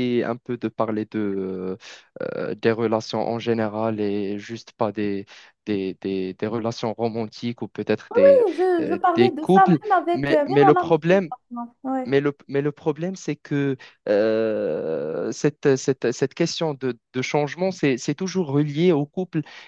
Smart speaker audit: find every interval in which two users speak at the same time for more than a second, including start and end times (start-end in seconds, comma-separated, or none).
8.8-11.3